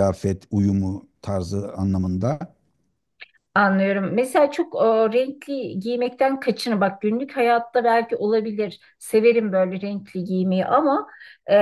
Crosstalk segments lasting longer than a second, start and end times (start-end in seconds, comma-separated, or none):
none